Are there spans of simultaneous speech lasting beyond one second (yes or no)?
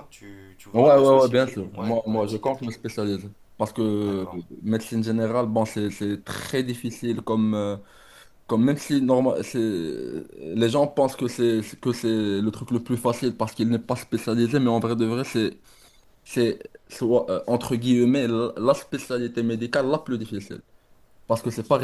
yes